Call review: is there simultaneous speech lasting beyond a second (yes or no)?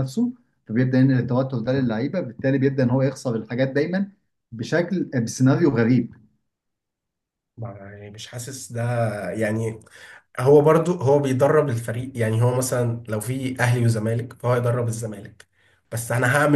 no